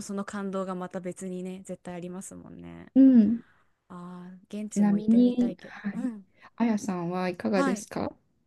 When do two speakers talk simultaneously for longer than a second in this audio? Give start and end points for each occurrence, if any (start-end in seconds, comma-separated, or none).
4.7-6.1